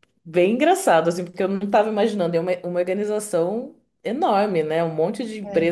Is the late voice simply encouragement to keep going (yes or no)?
yes